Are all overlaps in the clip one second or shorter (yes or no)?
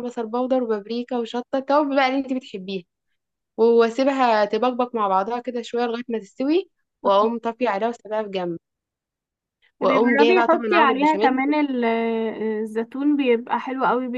no